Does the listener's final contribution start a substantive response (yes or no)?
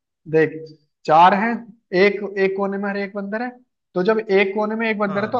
no